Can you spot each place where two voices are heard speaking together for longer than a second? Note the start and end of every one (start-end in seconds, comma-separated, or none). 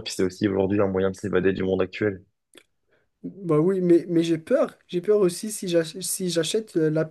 none